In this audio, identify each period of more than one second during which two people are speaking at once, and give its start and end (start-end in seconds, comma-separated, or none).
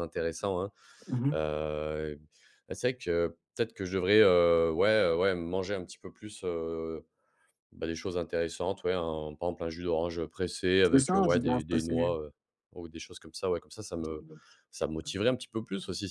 10.8-12.1